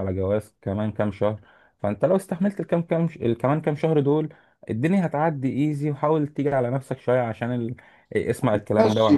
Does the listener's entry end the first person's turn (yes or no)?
yes